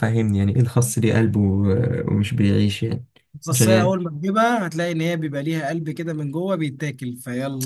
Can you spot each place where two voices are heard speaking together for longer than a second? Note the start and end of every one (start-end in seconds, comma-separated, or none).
none